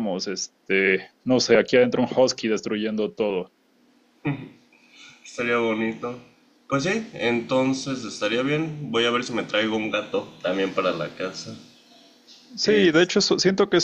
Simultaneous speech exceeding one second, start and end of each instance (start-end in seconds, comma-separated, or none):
none